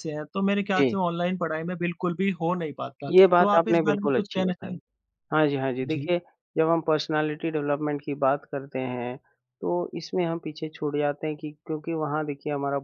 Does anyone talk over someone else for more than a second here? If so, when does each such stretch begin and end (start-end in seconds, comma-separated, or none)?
3.1-4.8